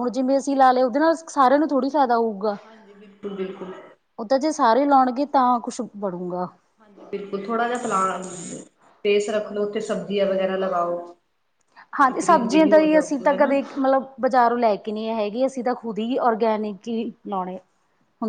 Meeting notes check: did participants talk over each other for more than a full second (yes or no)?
yes